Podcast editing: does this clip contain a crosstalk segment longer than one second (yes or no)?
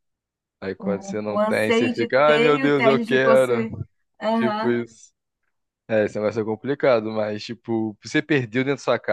yes